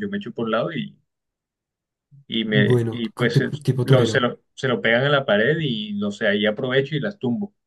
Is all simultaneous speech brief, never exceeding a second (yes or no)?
no